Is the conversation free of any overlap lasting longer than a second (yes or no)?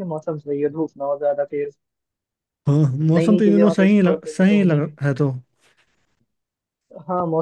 no